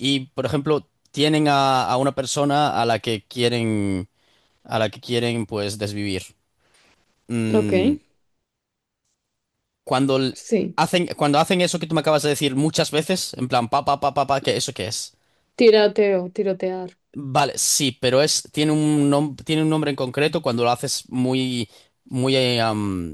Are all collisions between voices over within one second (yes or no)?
yes